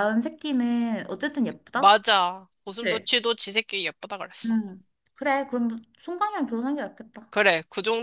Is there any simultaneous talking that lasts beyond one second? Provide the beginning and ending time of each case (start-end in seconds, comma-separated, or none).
none